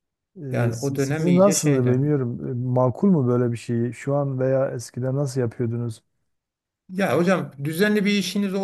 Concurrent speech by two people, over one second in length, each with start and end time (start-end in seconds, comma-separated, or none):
0.5-2.0